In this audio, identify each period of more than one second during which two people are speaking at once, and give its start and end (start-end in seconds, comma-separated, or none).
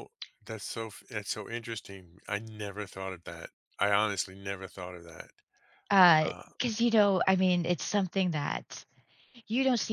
none